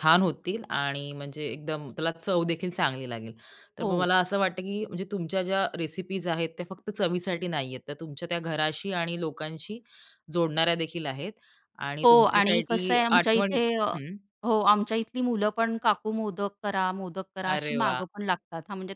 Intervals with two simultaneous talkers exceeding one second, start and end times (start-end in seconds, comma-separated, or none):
12.0-13.6